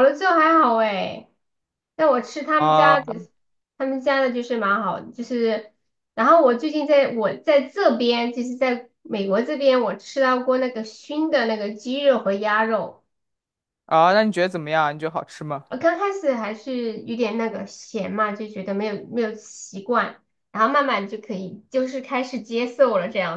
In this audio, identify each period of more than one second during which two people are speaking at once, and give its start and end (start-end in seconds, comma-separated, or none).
none